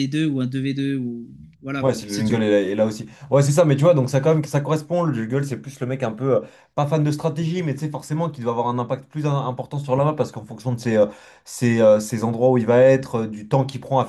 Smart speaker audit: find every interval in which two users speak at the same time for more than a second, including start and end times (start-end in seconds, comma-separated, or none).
none